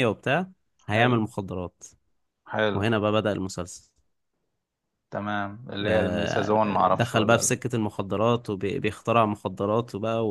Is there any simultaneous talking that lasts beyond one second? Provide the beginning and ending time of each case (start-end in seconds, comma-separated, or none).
5.8-7.5